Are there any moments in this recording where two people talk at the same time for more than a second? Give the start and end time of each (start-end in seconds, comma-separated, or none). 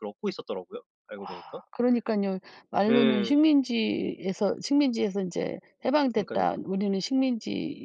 none